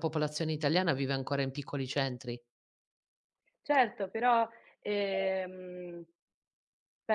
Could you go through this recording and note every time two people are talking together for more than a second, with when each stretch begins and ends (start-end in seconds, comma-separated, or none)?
none